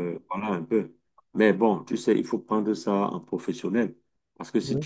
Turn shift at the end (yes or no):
no